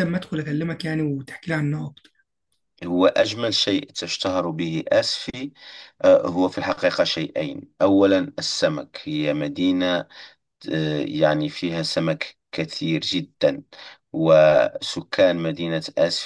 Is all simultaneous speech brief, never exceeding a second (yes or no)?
yes